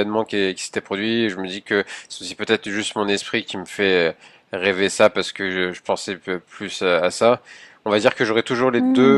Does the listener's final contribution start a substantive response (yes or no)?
no